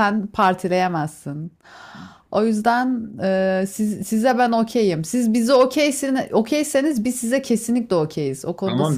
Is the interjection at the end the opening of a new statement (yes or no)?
yes